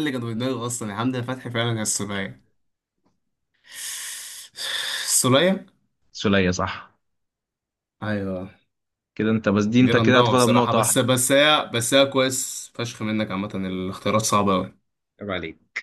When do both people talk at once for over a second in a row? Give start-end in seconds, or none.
9.8-11.1